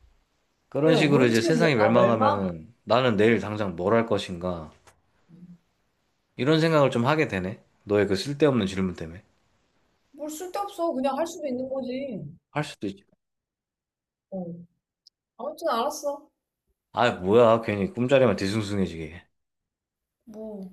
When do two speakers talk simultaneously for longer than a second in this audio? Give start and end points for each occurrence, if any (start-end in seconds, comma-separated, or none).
0.8-2.5